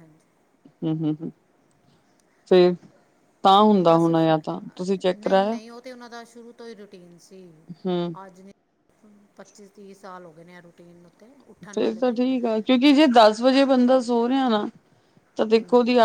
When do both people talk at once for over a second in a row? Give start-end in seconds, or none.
3.9-5.6